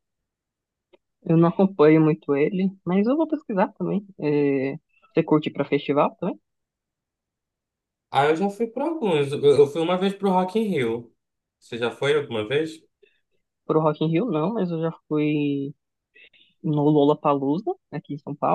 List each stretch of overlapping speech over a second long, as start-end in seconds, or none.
none